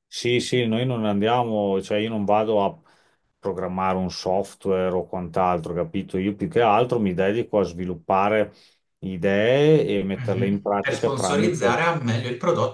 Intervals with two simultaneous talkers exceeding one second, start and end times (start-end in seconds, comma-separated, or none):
10.2-11.8